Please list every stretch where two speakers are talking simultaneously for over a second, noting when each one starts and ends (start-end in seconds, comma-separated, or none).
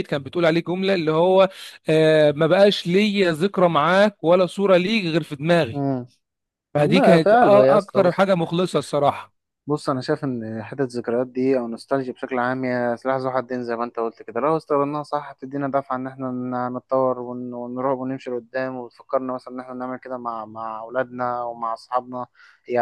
6.8-8.2